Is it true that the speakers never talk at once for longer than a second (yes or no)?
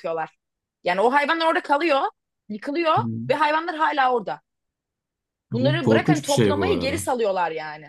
no